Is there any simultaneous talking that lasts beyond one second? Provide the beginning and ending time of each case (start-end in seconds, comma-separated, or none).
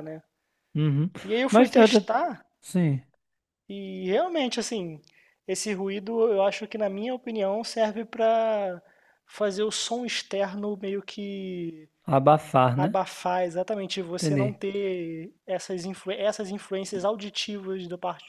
none